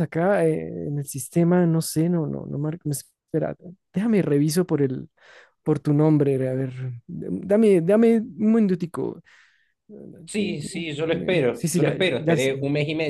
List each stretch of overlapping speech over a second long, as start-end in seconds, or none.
10.3-12.5